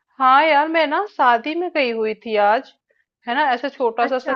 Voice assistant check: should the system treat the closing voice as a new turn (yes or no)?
no